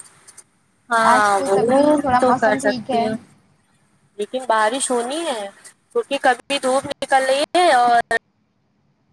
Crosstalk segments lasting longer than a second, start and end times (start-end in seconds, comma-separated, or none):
1.4-3.1